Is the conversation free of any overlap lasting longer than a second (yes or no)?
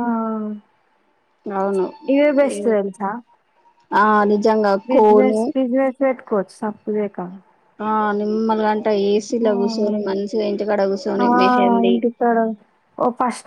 yes